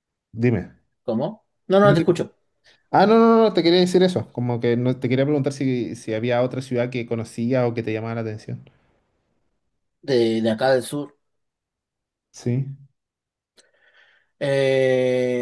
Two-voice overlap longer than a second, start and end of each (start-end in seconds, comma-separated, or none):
none